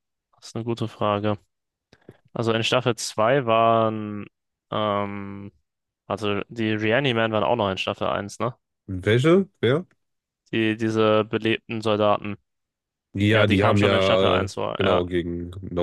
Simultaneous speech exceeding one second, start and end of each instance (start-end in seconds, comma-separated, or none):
13.3-15.0